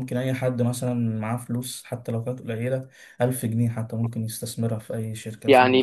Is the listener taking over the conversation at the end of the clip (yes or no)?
yes